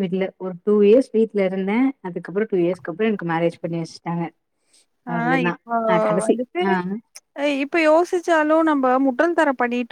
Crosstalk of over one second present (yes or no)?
no